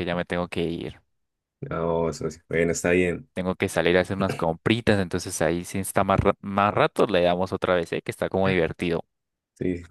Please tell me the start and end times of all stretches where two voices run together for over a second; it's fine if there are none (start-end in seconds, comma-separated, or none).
none